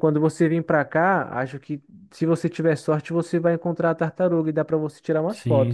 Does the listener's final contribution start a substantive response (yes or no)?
yes